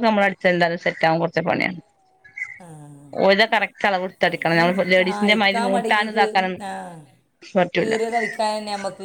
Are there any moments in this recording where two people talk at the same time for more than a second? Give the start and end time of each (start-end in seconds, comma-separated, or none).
4.7-6.5